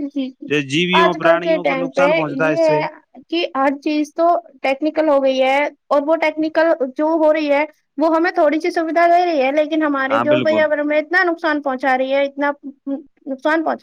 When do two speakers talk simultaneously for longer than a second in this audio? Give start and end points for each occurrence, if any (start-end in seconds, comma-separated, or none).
1.0-2.5